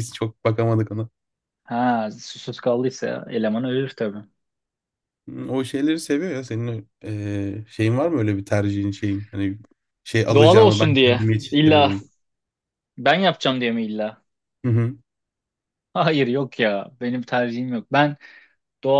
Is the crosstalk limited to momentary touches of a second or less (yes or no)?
no